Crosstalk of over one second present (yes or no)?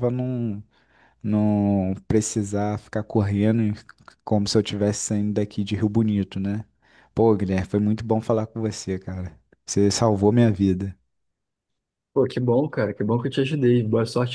no